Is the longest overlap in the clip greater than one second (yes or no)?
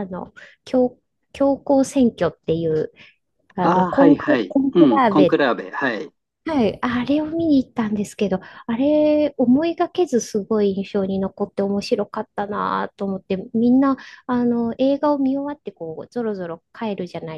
yes